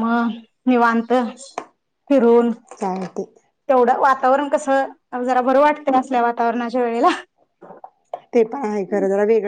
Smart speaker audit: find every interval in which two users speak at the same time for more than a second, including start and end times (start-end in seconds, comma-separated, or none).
none